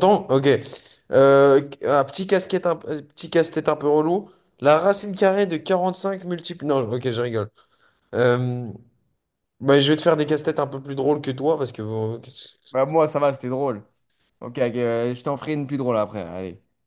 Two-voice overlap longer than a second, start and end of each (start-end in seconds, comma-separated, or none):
none